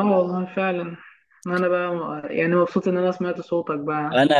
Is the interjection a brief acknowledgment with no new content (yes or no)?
no